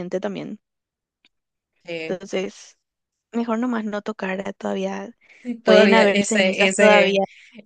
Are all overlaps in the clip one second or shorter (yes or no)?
no